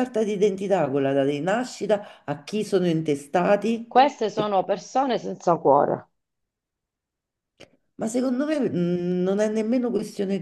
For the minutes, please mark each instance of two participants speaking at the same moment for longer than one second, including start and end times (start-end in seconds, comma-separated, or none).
none